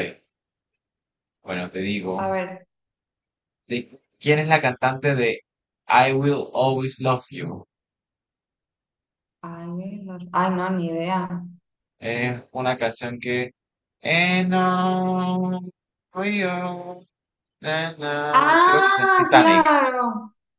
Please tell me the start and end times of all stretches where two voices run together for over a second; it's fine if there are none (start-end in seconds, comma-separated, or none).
18.3-19.6